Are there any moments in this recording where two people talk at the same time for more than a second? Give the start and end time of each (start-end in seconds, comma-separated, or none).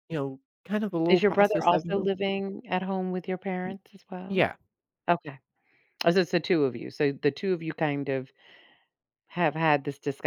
1.1-2.3